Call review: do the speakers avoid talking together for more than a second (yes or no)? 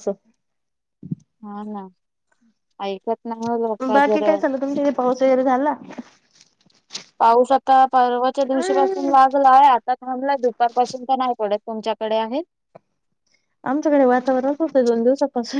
yes